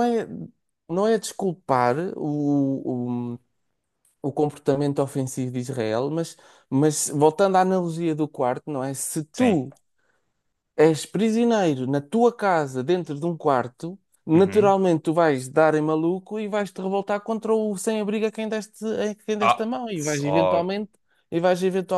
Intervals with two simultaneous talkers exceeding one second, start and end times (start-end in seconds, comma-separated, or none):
19.4-20.8